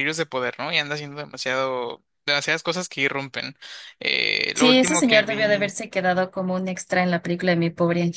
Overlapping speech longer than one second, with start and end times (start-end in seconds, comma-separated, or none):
4.5-5.8